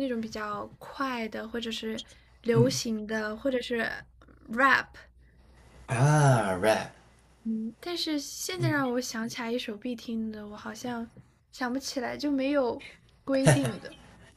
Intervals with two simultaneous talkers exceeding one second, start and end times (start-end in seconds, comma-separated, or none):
none